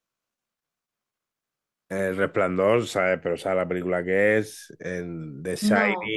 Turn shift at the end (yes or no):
no